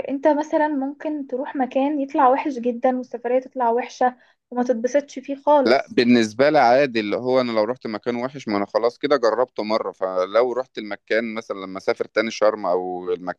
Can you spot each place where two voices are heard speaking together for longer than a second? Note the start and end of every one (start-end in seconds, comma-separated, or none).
none